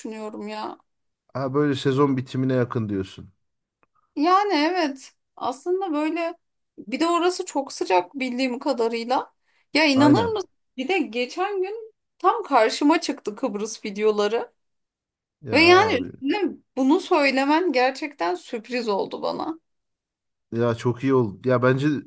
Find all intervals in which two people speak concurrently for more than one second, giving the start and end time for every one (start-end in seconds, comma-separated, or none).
none